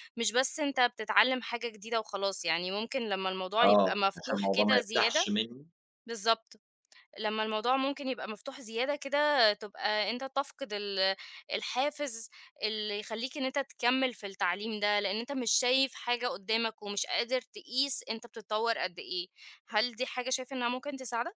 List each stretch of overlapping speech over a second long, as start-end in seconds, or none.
3.6-5.3